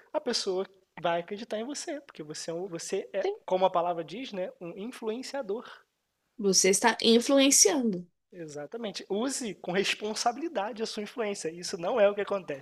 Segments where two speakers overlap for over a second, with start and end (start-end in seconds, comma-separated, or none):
none